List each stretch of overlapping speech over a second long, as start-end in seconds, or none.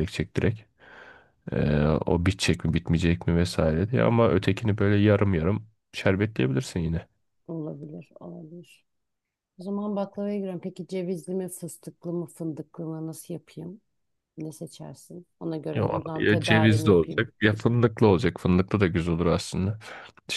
15.8-17.2